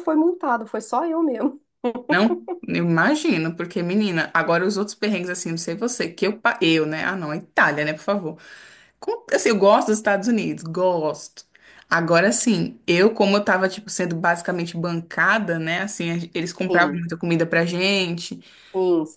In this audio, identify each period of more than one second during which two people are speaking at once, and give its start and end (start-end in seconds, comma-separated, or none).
none